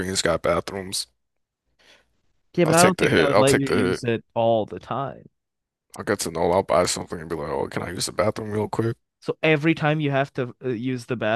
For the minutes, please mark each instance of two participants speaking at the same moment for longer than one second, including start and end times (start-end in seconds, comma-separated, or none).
2.6-4.0